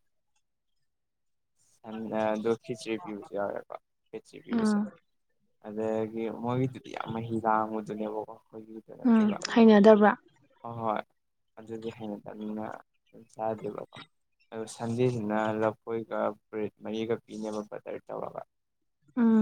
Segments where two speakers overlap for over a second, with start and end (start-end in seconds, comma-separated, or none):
none